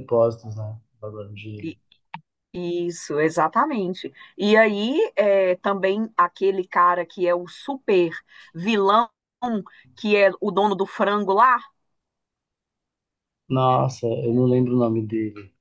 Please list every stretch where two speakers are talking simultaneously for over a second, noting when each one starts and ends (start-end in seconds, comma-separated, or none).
none